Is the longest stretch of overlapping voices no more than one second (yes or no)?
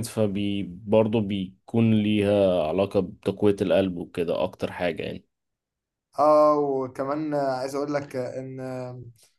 yes